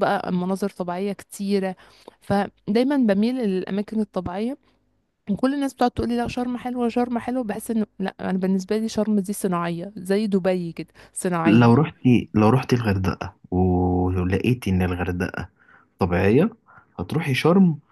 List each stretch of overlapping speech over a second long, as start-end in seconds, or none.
none